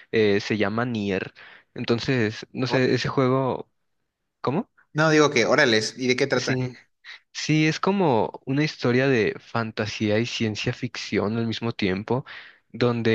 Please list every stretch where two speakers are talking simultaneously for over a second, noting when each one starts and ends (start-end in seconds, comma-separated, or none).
none